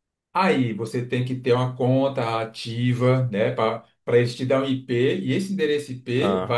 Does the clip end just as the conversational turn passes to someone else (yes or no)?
no